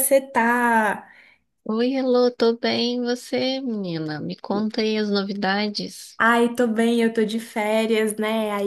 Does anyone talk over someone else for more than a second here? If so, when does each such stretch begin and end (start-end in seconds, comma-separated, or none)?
none